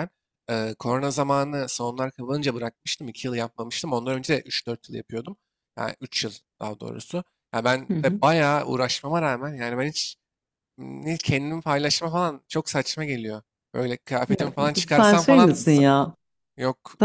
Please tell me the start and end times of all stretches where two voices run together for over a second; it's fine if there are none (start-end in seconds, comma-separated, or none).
14.3-15.8